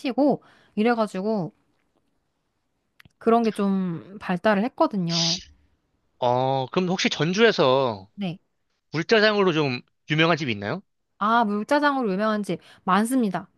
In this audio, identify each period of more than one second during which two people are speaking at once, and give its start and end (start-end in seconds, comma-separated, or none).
none